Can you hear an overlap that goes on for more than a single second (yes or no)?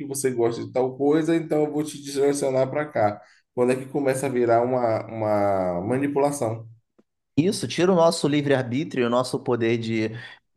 no